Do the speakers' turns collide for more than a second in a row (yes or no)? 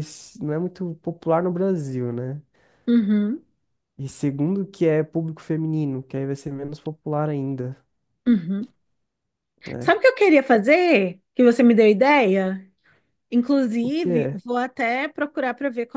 no